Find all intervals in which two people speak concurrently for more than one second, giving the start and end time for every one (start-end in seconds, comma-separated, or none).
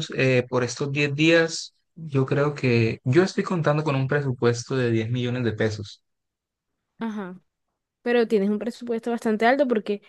none